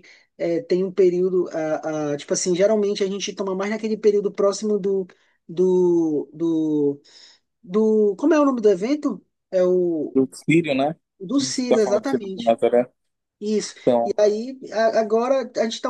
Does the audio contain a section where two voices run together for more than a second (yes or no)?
yes